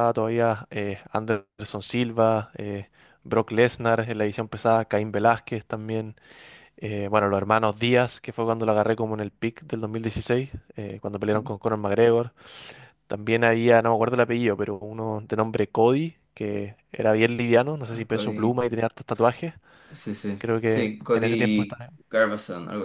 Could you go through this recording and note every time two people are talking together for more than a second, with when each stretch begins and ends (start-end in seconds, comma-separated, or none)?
20.4-21.9